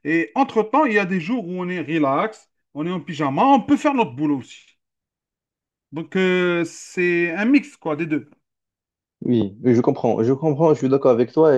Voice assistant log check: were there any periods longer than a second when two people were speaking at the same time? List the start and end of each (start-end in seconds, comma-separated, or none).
none